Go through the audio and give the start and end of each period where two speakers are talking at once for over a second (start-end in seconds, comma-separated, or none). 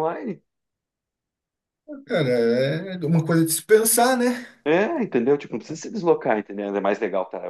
none